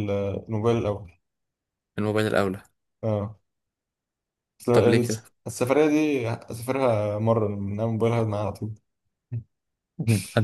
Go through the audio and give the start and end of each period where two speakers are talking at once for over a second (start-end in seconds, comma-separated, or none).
none